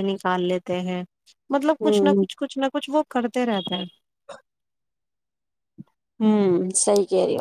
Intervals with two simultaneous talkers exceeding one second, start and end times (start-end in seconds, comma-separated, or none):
none